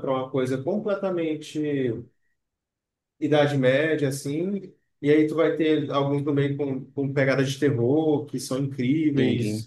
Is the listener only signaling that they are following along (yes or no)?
yes